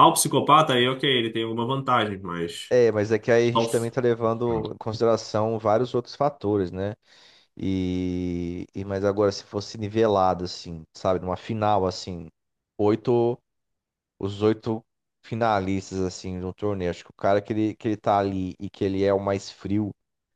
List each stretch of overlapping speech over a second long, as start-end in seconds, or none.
none